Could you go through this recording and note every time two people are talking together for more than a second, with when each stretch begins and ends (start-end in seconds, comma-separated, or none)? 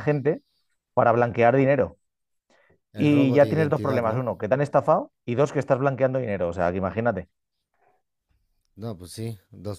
3.0-4.3